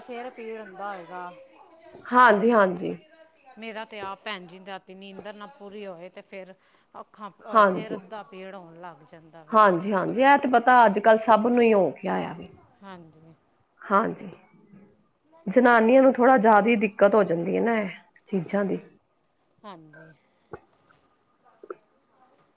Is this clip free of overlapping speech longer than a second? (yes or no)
yes